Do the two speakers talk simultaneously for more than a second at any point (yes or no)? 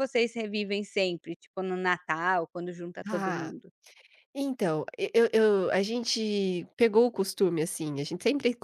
no